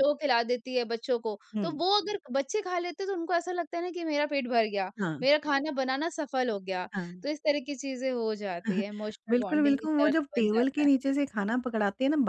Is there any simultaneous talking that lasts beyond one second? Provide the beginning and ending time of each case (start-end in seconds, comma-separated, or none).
9.3-10.9